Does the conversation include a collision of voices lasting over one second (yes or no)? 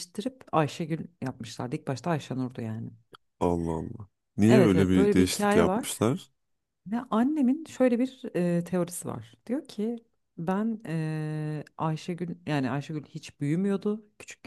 yes